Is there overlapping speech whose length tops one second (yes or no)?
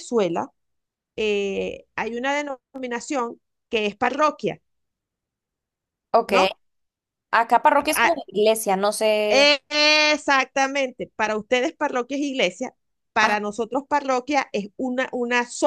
no